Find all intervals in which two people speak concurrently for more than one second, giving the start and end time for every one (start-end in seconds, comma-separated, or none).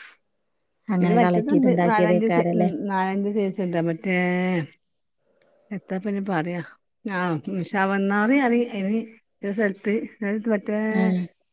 1.0-2.4